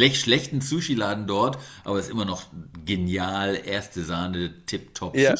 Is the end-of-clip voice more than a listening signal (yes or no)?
yes